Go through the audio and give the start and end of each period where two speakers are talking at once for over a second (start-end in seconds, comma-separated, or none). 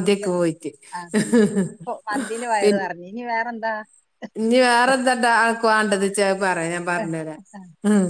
none